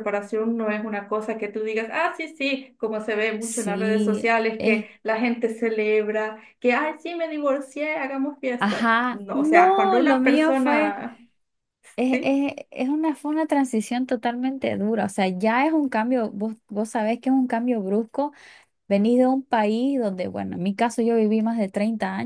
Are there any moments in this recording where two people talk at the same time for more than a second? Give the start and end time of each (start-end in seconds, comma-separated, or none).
3.4-4.9, 8.6-11.0